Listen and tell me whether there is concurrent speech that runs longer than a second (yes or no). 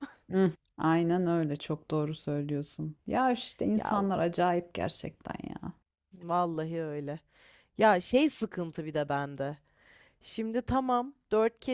no